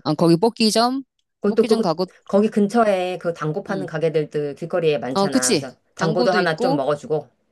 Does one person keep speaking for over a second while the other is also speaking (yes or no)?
yes